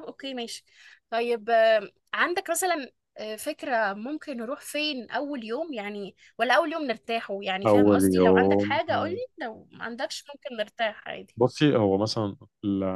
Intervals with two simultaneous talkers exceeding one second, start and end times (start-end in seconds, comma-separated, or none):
7.7-9.2